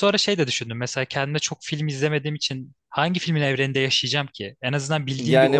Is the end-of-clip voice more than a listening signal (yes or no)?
yes